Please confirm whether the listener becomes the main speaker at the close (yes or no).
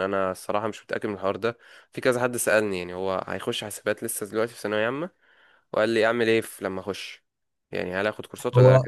no